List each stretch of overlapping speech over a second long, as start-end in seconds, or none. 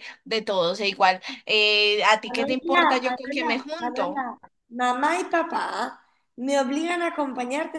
2.2-4.3